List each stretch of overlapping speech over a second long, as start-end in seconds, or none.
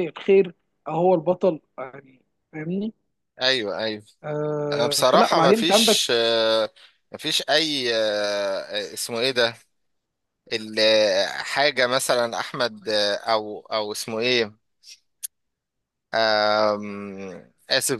4.7-6.0